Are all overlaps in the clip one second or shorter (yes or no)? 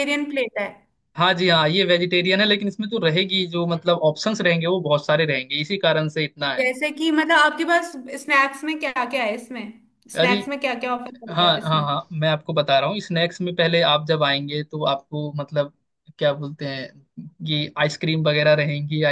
yes